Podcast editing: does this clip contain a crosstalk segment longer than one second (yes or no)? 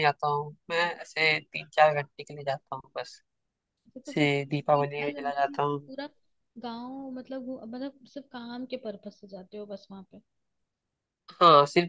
yes